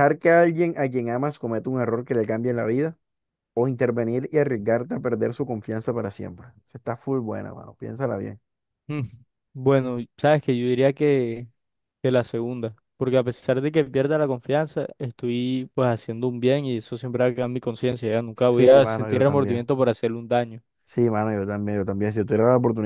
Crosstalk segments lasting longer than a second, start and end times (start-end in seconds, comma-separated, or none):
18.3-19.6